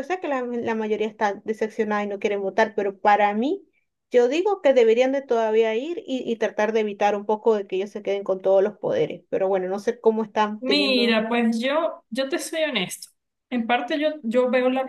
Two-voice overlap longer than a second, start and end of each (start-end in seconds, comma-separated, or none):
none